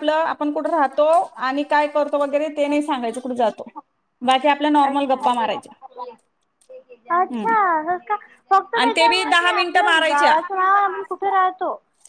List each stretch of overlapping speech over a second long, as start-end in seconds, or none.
8.8-10.4